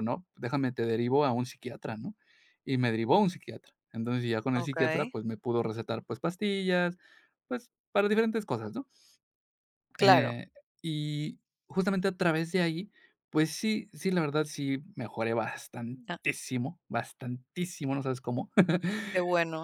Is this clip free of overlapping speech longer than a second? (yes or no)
yes